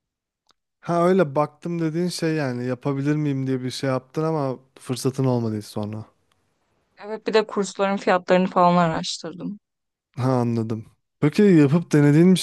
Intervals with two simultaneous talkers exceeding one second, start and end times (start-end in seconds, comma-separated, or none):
none